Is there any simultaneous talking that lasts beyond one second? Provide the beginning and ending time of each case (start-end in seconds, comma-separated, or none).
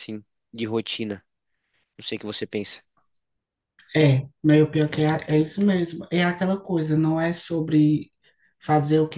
none